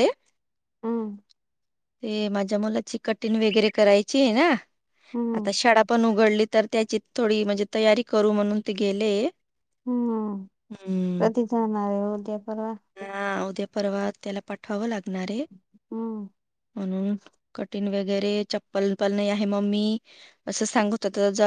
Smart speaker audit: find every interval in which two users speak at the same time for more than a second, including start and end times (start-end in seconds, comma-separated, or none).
none